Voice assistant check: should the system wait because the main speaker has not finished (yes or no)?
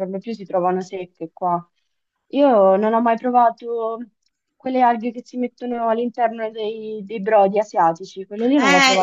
no